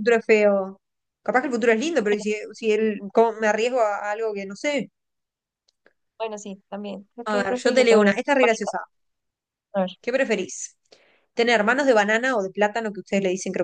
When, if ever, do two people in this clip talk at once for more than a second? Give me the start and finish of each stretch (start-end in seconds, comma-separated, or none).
7.3-8.7